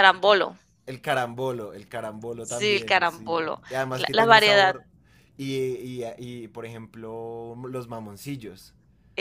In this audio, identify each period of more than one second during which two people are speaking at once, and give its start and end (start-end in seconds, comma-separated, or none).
2.4-4.8